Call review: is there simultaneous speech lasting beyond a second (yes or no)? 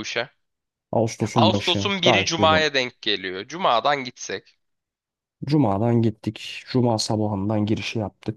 yes